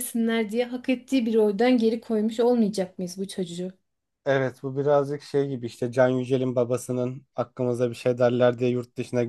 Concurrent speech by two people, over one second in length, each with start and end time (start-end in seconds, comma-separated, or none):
none